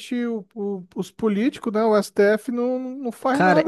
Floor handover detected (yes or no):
yes